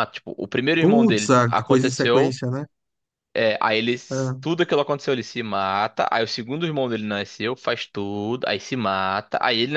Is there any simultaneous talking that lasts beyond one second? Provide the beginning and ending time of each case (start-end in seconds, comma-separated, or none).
0.8-2.4